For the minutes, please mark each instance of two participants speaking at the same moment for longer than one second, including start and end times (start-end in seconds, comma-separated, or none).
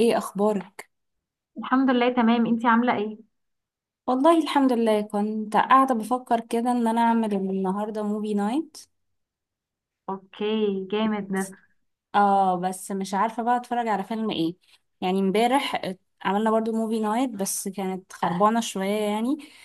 none